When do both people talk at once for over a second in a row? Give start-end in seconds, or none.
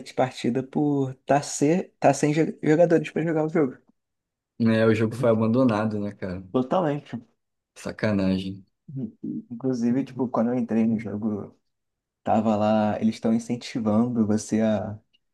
none